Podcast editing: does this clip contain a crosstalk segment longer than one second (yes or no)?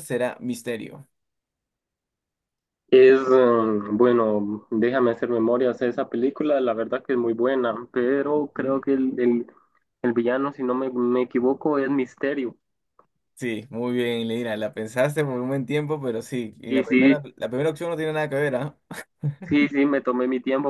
no